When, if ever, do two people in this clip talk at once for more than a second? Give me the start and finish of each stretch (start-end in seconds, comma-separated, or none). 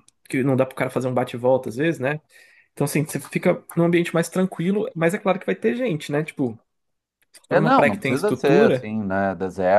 7.5-8.9